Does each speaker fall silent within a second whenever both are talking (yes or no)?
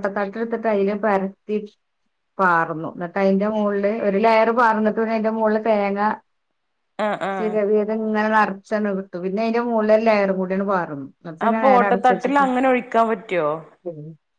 yes